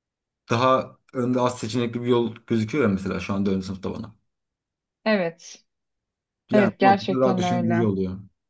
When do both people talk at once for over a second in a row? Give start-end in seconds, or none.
6.5-7.9